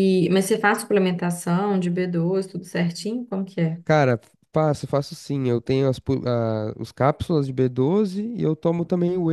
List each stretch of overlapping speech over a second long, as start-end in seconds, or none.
none